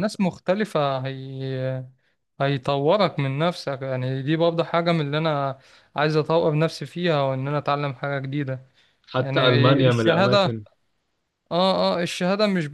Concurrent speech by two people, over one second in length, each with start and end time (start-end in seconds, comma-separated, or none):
9.2-10.4